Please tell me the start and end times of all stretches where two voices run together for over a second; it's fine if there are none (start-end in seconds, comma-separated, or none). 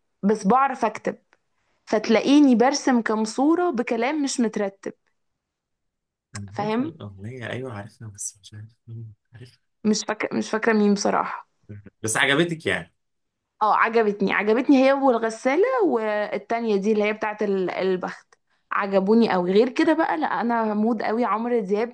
none